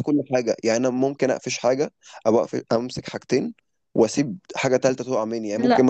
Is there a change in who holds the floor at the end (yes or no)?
no